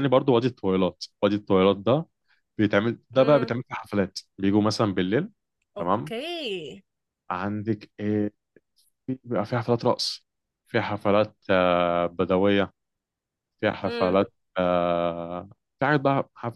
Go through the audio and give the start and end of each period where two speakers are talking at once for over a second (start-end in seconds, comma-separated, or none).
none